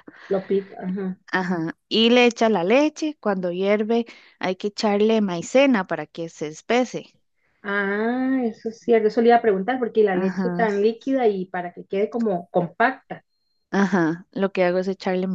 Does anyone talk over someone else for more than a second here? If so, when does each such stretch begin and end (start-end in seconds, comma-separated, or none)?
none